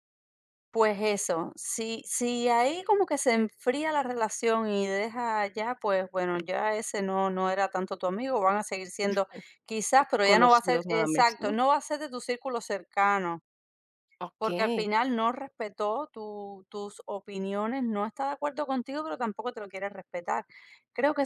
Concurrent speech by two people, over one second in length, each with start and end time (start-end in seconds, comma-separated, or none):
10.2-11.5